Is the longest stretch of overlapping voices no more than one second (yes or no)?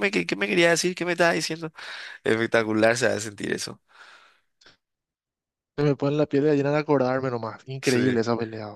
yes